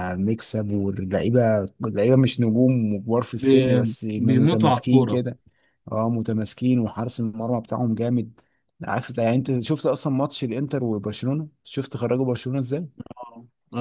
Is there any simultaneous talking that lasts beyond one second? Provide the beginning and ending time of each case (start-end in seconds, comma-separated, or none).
3.3-5.2